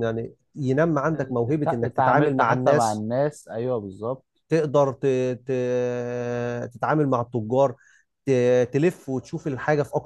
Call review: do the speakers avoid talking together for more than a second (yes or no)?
no